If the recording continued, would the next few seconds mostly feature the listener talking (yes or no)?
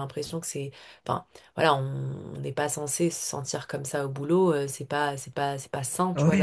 yes